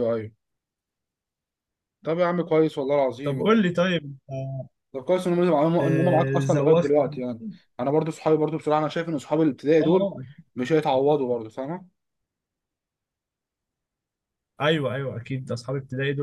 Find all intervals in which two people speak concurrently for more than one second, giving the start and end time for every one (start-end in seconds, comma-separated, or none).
5.8-7.2